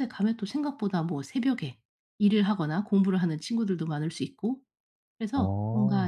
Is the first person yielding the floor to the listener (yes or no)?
no